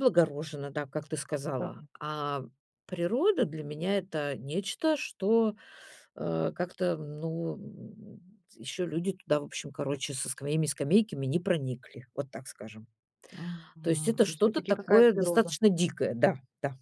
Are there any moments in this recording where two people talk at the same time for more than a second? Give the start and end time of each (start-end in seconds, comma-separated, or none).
13.8-15.6